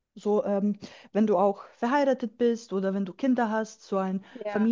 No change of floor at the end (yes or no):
no